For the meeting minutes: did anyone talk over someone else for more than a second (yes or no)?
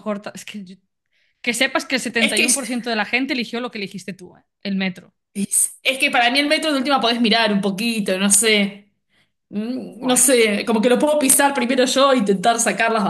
no